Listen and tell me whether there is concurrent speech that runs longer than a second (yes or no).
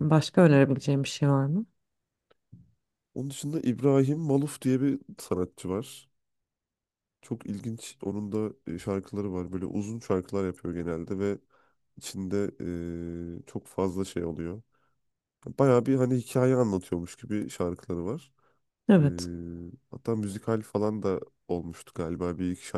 no